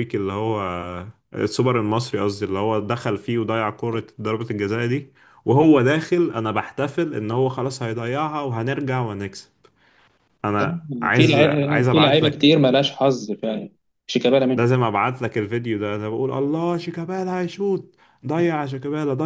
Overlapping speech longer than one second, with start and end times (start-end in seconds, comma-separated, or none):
11.1-12.5